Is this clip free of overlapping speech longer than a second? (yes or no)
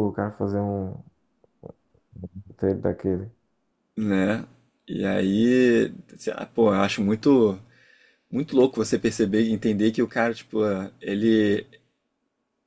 yes